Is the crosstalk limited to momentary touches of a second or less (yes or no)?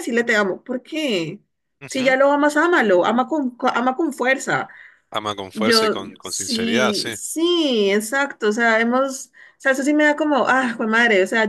no